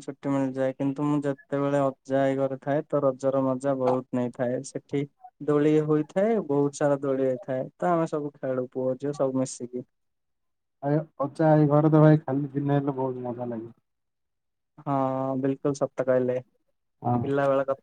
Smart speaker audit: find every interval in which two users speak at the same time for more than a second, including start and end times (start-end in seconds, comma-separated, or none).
none